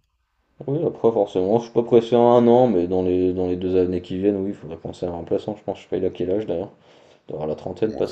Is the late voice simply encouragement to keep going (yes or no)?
no